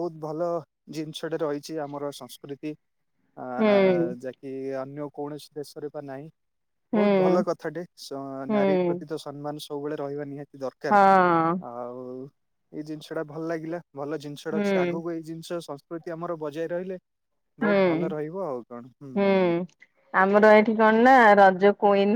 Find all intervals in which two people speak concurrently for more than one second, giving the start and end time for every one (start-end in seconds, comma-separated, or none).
none